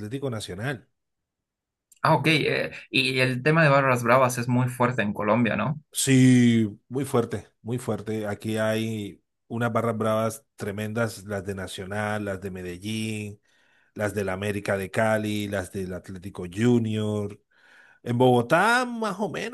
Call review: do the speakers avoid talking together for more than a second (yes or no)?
yes